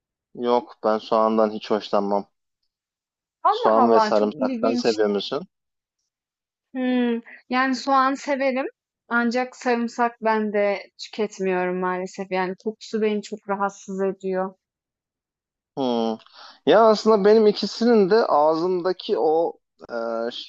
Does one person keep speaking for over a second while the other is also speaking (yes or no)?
yes